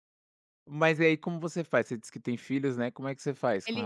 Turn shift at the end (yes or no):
yes